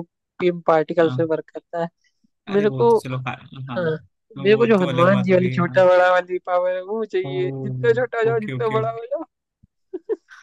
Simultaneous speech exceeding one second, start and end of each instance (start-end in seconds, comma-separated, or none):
4.4-5.8